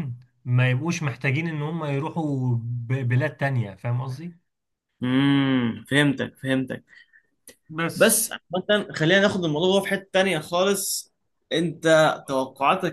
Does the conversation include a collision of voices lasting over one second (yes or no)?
no